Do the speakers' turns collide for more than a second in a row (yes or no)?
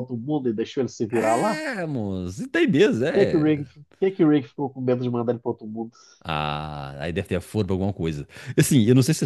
no